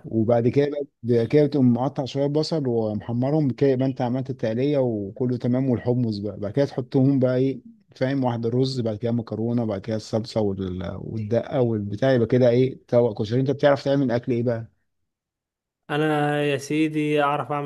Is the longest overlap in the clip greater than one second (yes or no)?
no